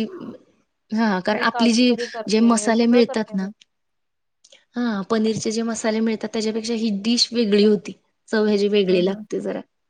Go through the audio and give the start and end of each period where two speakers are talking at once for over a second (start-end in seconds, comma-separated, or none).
1.3-3.5